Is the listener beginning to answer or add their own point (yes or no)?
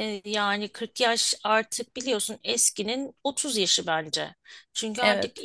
no